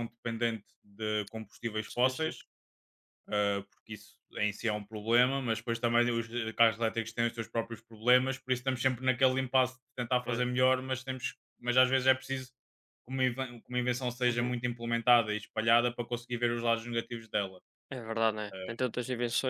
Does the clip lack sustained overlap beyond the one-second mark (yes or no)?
yes